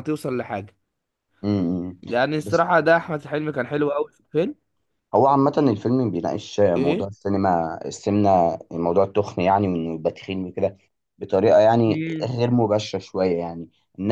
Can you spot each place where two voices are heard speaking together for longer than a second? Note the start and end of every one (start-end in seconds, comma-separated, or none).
none